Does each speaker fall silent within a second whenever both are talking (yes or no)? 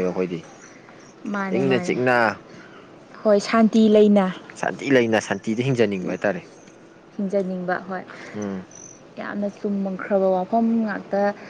yes